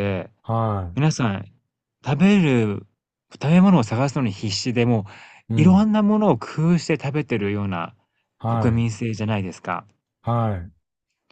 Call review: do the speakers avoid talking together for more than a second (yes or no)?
yes